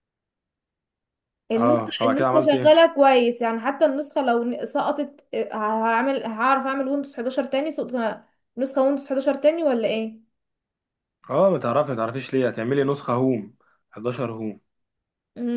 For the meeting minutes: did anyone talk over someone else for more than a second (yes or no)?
yes